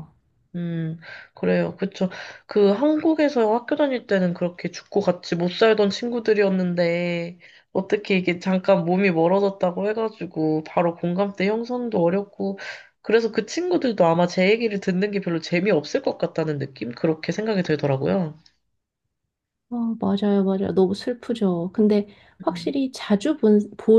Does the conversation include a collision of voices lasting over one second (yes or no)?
no